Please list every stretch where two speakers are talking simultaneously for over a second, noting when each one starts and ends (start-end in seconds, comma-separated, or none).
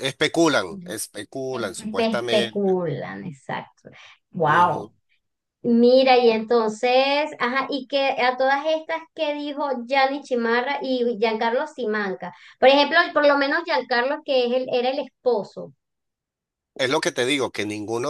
1.5-2.7